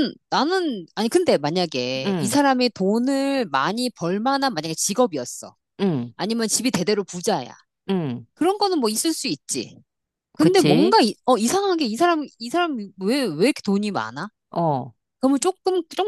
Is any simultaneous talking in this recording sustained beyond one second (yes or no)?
no